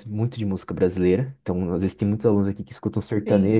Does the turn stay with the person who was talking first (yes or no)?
yes